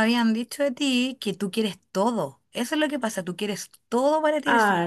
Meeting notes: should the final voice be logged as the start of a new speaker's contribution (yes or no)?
yes